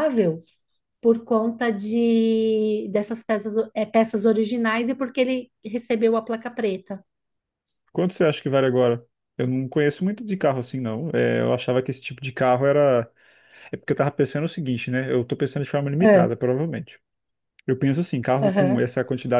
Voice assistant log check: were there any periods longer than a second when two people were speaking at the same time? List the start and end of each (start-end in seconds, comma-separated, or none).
none